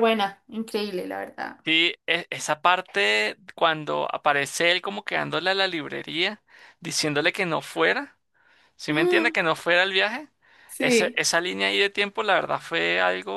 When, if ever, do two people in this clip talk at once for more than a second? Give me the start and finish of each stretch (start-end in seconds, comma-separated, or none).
none